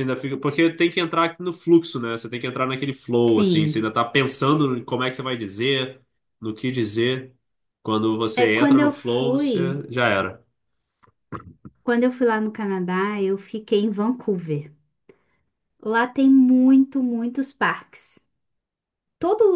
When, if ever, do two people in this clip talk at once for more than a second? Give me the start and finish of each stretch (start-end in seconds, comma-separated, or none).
8.3-9.8